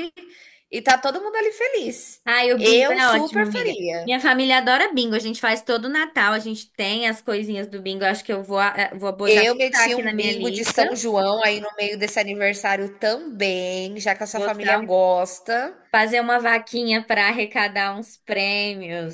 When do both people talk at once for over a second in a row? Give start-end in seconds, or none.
2.6-4.1, 9.3-10.8